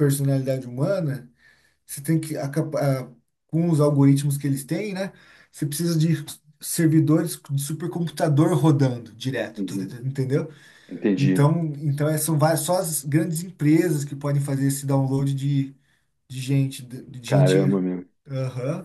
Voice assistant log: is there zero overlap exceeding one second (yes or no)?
yes